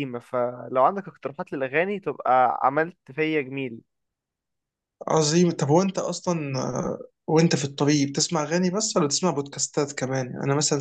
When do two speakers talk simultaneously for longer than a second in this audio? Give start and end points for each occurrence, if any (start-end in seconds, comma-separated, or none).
none